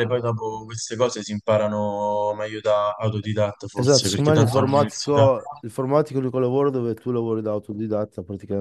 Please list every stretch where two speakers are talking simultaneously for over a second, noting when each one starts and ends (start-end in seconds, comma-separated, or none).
3.7-5.3